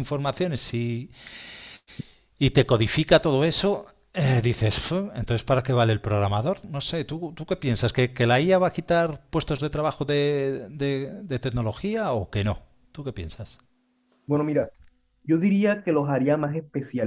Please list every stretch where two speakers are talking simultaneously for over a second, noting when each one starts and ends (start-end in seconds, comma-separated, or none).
none